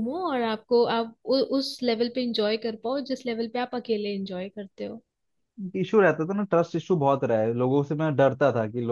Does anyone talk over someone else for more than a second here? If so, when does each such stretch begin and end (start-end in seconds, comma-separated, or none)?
none